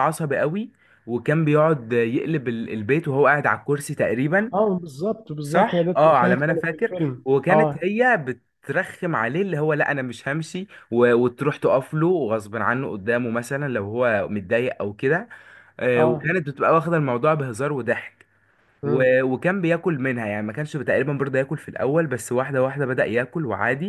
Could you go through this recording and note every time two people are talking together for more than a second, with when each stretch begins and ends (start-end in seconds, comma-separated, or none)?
5.4-7.8